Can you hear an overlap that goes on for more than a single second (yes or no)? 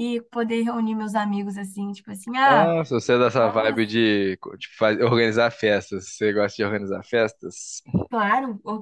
no